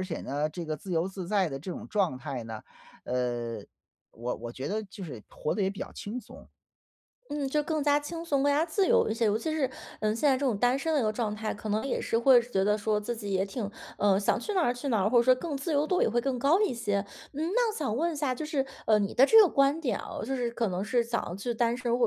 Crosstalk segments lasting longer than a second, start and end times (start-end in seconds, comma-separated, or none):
none